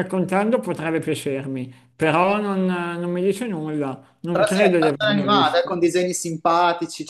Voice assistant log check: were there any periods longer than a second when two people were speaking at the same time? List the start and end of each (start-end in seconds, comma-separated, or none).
4.3-5.7